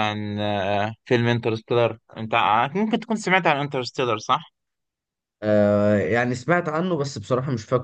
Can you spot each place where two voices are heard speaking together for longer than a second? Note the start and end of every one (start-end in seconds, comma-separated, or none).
none